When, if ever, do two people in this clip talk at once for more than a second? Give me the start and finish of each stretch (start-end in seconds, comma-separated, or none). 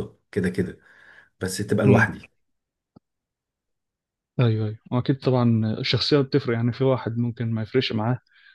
none